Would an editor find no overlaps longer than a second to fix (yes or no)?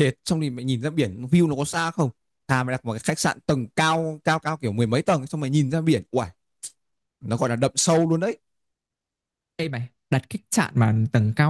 yes